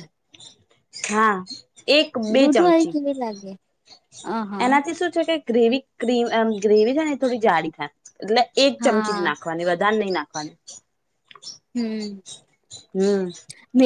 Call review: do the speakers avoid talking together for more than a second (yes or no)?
yes